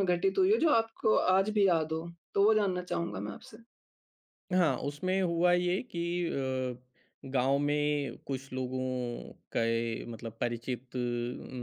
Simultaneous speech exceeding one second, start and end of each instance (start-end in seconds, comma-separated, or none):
none